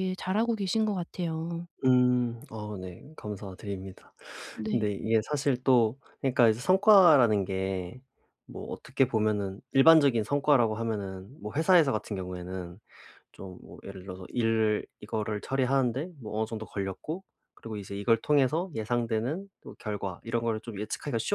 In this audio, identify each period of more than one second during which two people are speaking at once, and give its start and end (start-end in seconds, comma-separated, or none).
none